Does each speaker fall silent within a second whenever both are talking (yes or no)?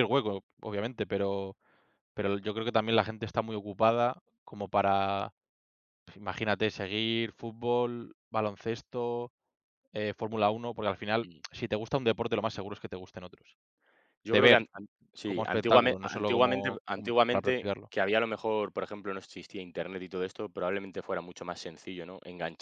no